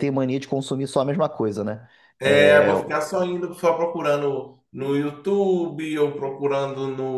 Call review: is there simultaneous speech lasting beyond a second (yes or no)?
no